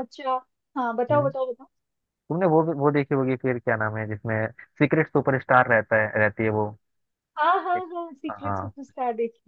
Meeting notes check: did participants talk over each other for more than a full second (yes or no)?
no